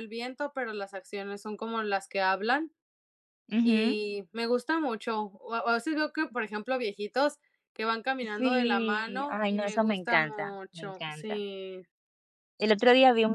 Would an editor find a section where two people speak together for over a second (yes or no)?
yes